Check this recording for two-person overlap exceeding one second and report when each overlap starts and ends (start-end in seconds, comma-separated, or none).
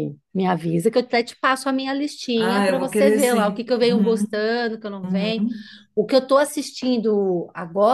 2.4-4.3